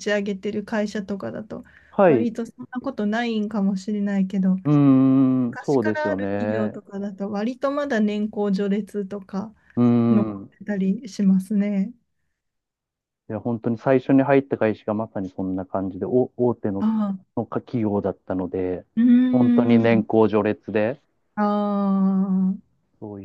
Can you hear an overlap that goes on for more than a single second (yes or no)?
yes